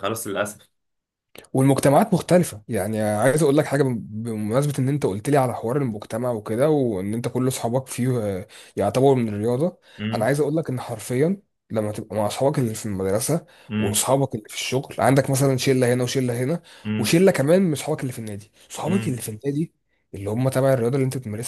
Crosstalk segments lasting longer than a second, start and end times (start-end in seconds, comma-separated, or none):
none